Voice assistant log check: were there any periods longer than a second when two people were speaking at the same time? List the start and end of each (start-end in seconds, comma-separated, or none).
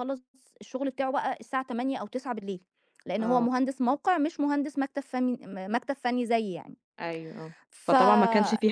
none